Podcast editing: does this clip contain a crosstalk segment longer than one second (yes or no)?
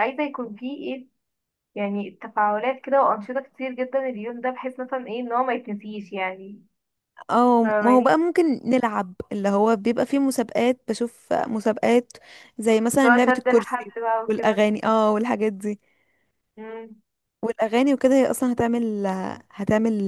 yes